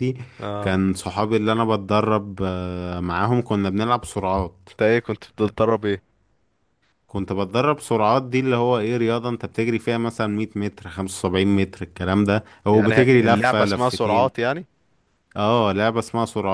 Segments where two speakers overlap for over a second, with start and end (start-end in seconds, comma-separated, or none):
12.7-14.3